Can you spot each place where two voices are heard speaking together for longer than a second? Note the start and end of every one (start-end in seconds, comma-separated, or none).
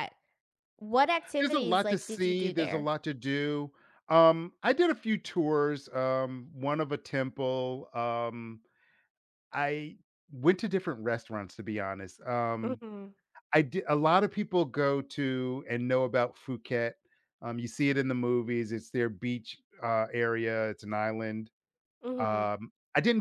1.4-2.9